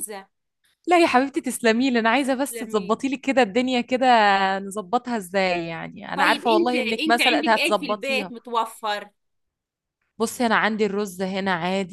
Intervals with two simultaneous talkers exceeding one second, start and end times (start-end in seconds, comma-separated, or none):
6.1-8.3